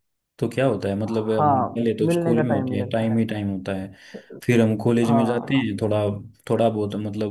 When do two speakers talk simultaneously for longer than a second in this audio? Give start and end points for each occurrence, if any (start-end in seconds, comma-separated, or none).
1.4-3.1